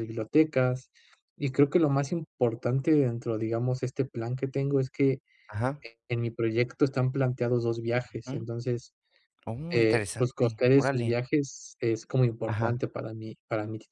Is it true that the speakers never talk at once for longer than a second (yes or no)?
no